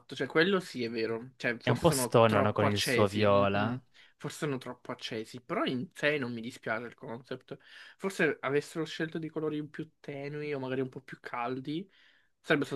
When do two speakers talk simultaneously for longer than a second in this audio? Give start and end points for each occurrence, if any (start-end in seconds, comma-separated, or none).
1.6-3.8